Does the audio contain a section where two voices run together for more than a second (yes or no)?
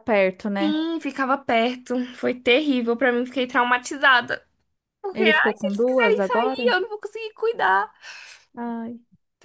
yes